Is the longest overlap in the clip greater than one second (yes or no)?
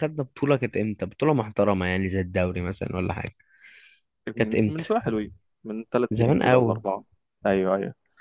no